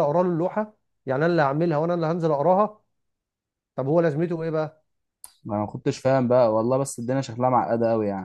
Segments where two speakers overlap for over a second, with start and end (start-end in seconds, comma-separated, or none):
none